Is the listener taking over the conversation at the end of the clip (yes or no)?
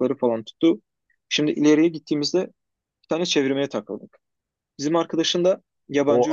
yes